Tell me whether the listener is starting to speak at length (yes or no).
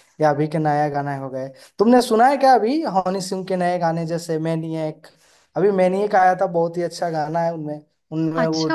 yes